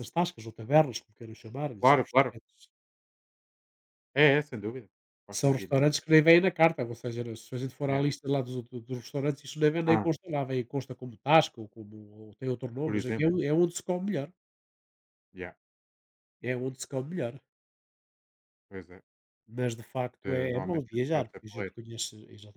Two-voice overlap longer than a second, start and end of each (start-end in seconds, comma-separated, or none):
20.2-21.8